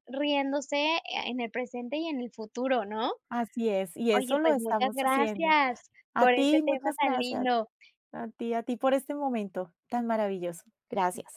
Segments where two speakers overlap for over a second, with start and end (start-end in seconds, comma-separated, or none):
4.1-5.5, 6.1-7.5